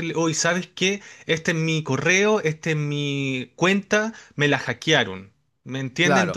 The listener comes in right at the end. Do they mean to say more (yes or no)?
yes